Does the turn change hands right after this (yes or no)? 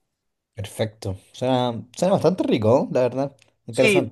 yes